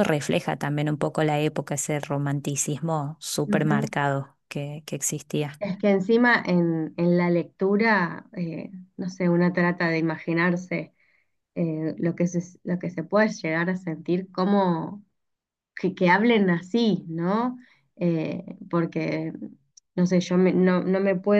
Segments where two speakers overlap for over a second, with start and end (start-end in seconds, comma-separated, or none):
none